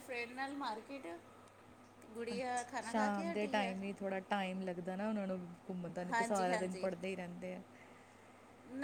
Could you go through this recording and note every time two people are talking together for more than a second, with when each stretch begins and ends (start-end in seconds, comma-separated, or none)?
2.3-3.8